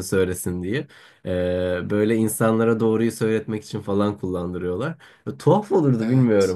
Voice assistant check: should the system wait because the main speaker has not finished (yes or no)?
yes